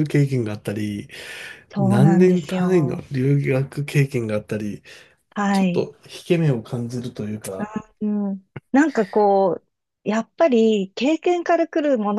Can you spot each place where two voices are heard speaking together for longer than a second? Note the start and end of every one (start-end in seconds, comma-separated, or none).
1.8-3.0